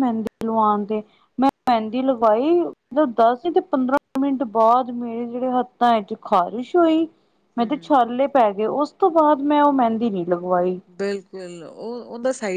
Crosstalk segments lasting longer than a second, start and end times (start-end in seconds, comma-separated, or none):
none